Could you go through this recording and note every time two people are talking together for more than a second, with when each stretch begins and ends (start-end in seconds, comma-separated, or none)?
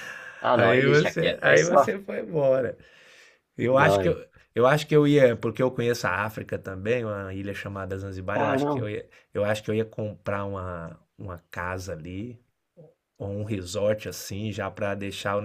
0.6-1.9